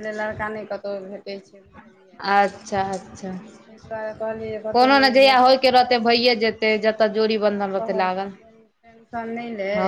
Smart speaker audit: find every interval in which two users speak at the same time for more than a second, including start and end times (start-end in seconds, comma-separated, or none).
4.8-6.6